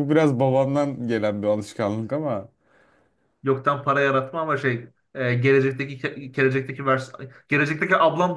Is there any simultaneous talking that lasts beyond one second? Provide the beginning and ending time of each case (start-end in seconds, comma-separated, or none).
none